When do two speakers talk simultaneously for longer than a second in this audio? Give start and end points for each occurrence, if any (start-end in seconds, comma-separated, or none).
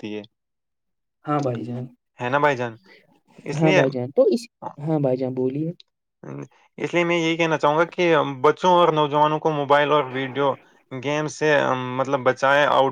none